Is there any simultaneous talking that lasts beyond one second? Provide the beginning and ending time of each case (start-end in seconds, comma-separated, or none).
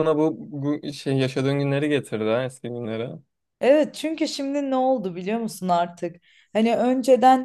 none